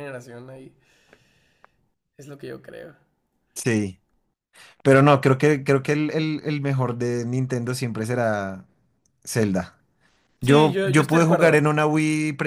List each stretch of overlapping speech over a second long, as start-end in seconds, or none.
10.4-11.6